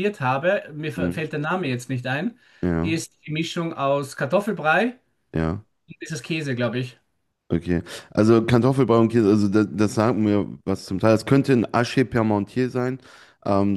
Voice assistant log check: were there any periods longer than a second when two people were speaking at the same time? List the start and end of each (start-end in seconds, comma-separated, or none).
none